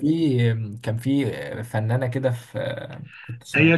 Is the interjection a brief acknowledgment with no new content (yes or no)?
no